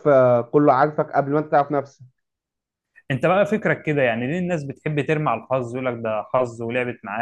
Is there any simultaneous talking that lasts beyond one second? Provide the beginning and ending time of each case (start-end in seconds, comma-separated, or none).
none